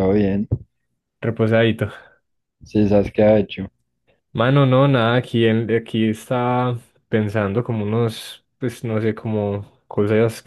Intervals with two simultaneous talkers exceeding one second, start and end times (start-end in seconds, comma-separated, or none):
none